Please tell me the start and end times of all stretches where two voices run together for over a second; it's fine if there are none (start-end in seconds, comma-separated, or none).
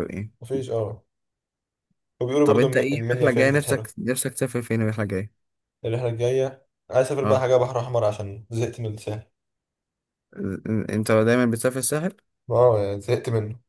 2.4-3.9